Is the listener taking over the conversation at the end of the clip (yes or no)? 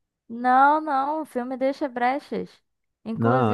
no